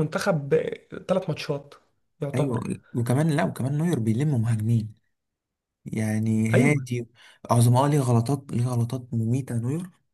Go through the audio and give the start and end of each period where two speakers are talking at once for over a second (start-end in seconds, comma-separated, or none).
none